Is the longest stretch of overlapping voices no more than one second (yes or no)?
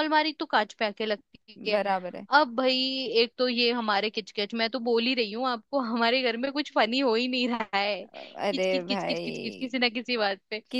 no